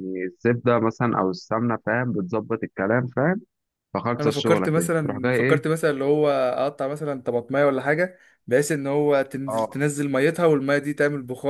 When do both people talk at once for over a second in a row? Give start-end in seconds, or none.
4.2-5.6